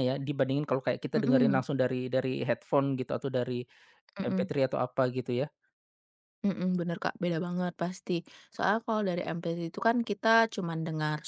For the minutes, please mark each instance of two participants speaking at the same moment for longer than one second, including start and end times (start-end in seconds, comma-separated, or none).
none